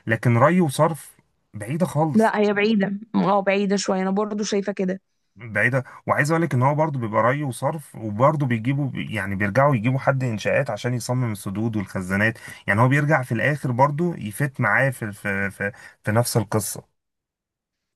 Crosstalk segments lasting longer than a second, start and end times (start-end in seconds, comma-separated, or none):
none